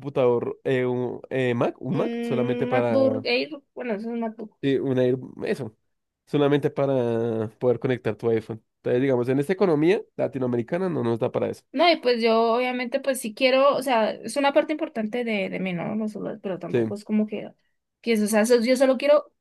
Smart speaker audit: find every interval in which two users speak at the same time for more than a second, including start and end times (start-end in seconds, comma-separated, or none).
1.9-3.2